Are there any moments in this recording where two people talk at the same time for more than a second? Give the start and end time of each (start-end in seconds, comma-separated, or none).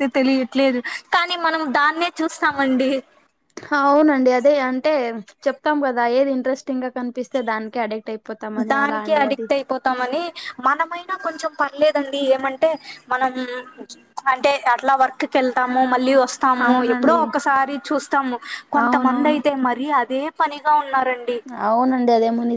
none